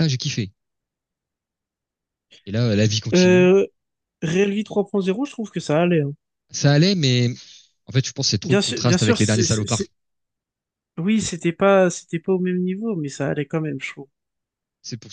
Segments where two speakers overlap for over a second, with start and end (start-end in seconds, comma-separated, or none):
8.4-9.8